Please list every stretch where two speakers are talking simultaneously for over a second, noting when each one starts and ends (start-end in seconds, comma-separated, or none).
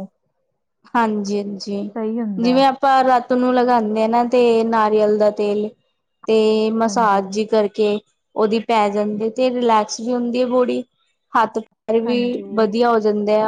none